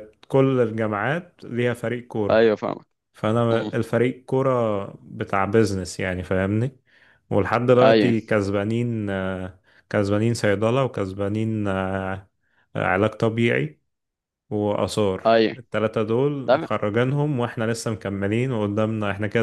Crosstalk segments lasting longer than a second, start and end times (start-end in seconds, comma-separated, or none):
none